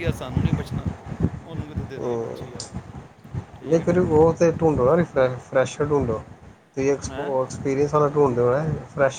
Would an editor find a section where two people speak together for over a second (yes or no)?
no